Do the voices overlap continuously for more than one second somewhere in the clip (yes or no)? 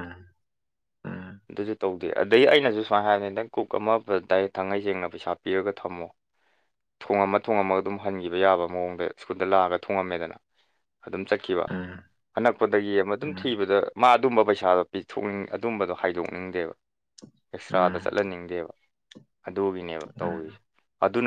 no